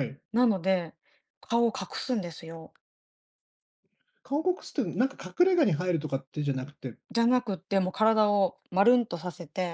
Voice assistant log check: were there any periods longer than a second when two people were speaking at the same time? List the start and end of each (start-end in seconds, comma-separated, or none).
none